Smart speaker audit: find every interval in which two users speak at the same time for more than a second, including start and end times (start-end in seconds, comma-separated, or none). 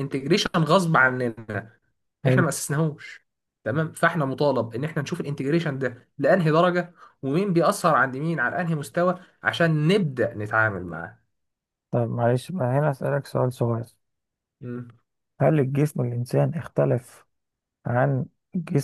none